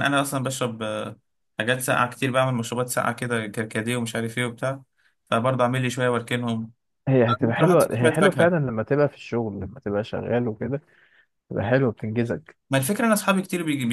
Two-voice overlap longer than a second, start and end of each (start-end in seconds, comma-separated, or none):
7.3-8.6